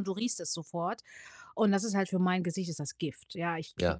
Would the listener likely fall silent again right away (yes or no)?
yes